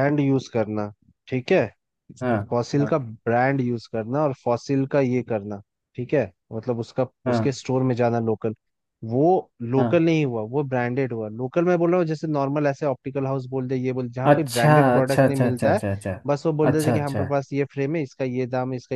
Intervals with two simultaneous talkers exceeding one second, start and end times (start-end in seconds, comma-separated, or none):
14.3-15.8